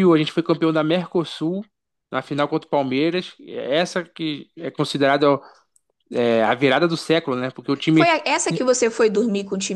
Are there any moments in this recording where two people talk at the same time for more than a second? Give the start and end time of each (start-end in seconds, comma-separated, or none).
none